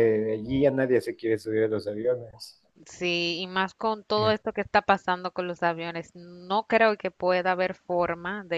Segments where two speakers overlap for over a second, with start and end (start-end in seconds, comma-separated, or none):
none